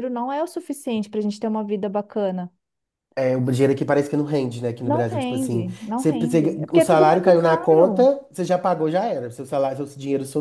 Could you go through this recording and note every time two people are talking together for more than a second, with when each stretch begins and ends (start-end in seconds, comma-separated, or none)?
4.8-8.1